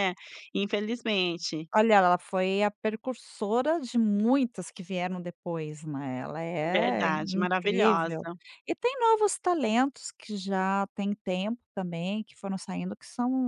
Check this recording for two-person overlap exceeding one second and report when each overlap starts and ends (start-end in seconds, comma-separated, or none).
6.8-8.3